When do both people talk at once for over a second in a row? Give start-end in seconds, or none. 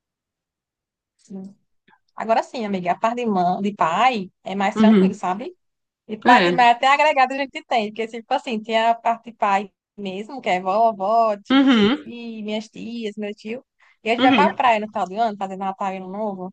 none